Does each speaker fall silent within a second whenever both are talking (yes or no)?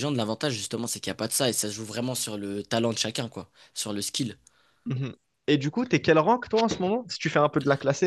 yes